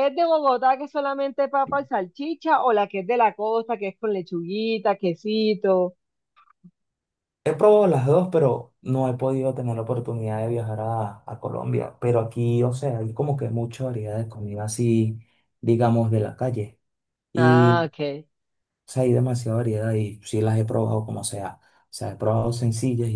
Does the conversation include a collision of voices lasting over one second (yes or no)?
no